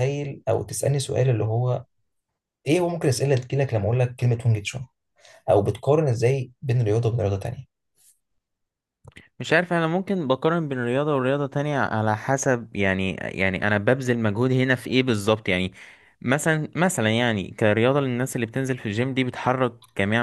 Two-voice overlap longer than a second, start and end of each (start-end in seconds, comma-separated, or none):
none